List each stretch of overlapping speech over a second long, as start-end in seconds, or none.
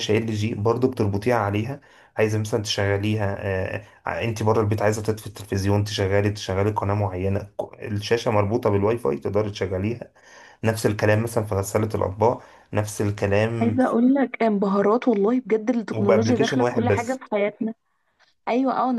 15.9-17.2